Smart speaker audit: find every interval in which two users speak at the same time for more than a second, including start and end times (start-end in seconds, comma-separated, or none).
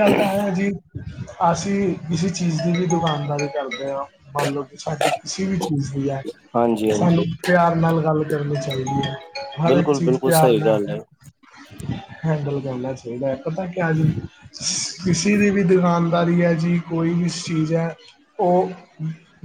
9.7-10.9